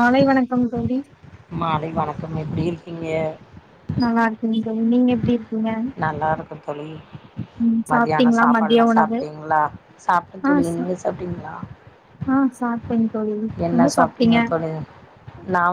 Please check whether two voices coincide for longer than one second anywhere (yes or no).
yes